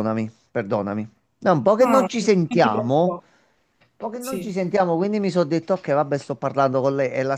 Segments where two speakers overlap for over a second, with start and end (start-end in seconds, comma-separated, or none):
1.8-3.0